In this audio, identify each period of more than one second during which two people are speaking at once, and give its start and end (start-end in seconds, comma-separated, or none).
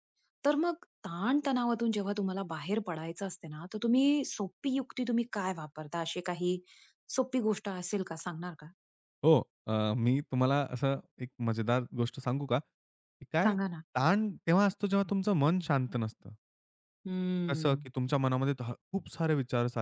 none